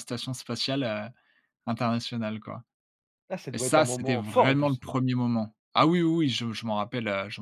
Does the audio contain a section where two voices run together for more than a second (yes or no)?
yes